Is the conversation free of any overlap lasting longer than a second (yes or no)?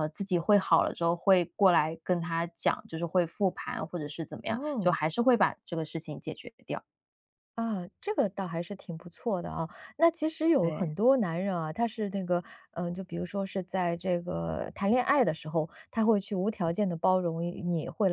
yes